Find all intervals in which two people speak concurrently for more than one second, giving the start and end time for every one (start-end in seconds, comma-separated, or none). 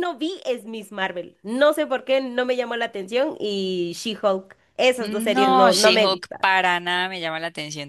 5.0-6.5